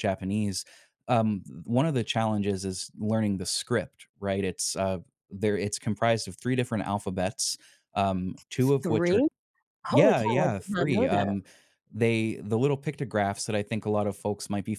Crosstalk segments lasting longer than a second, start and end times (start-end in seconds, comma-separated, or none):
9.9-11.3